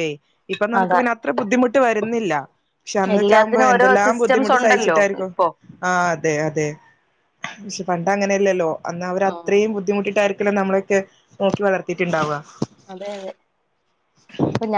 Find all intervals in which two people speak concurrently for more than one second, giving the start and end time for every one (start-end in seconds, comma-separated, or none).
3.1-5.3